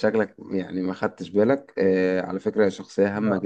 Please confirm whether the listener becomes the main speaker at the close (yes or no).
no